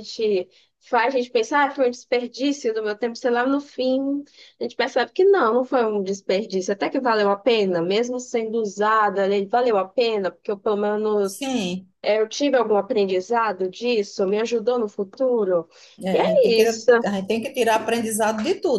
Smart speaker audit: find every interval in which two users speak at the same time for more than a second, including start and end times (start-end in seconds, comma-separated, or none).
none